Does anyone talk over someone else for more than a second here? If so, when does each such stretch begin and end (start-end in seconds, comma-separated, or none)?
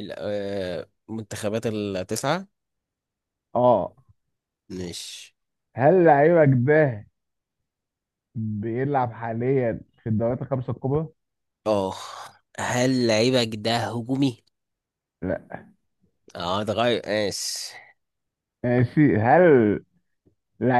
none